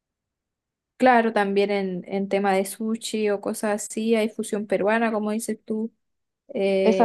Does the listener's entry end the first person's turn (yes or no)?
yes